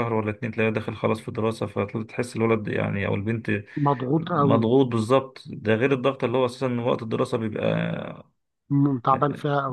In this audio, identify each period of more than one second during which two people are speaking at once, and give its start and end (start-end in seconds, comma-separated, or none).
none